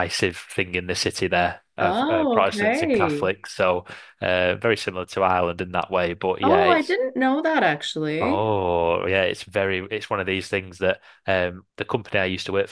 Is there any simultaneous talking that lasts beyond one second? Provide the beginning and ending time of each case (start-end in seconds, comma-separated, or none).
1.8-3.3